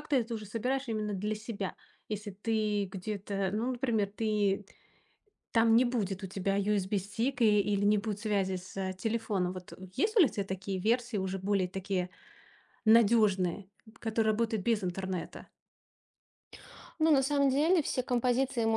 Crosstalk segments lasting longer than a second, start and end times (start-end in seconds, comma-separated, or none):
none